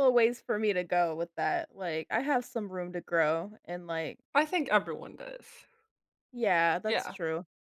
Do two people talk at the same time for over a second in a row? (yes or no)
no